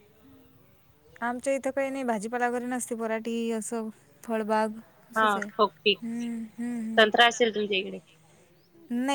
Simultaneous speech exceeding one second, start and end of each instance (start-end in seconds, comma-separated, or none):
5.2-7.4